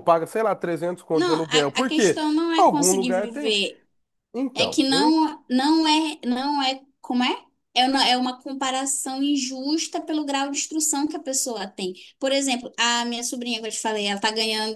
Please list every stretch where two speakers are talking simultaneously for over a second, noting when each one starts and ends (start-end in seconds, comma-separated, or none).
1.1-3.6